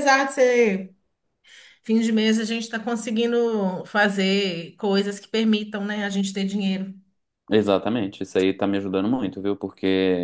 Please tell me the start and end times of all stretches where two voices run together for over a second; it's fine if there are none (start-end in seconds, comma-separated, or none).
none